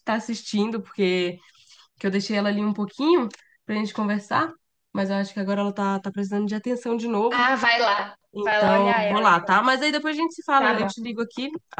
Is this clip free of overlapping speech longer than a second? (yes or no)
no